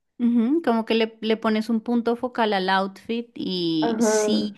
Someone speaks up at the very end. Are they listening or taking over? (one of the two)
listening